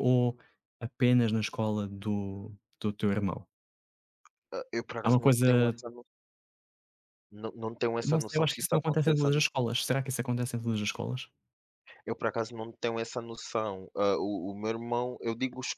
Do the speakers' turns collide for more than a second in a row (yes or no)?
yes